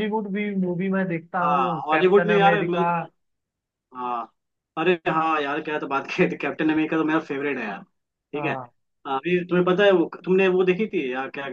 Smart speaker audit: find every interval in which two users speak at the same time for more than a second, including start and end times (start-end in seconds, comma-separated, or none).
1.4-2.8